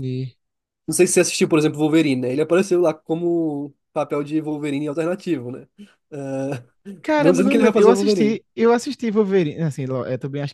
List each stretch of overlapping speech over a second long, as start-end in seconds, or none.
7.2-8.4